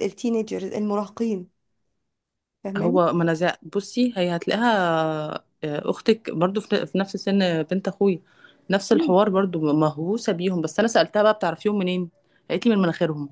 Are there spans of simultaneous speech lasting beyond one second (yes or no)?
no